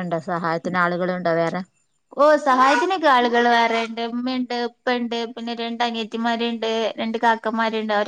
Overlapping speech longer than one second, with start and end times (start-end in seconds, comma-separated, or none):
none